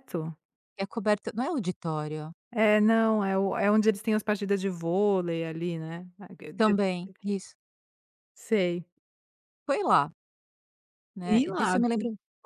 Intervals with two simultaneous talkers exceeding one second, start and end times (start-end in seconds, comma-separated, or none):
none